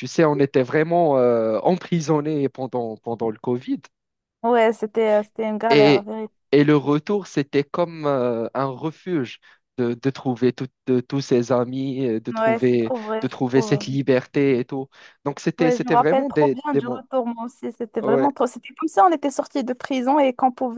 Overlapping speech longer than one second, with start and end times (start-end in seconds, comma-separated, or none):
12.3-14.0, 15.6-17.0